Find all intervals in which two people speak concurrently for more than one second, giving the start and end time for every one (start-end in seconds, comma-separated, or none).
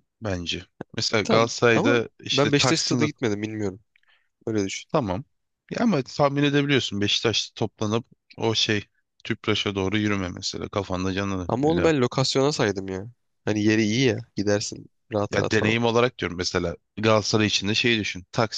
1.2-3.0